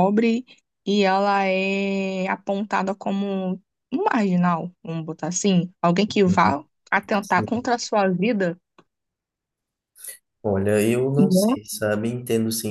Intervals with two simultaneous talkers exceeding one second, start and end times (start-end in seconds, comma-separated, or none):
none